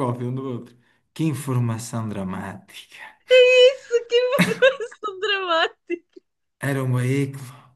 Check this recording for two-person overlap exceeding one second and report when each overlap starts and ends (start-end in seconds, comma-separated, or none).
none